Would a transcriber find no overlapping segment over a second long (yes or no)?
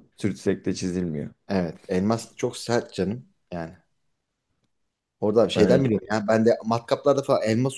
yes